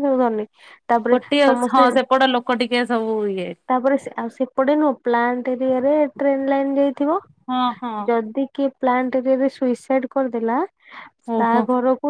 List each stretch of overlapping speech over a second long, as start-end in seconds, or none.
none